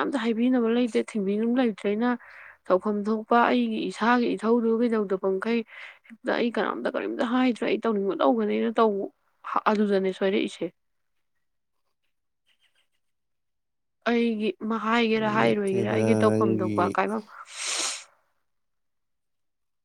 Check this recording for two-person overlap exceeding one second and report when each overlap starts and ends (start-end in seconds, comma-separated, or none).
15.4-17.0